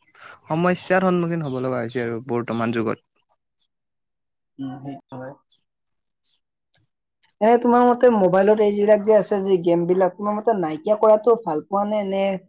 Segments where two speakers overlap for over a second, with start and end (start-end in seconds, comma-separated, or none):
none